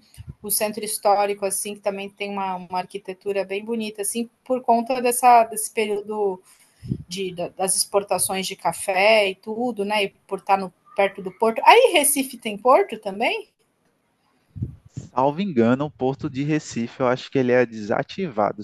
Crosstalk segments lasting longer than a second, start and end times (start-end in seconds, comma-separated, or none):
none